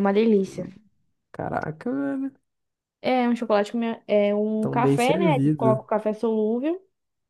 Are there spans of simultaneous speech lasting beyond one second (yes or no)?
yes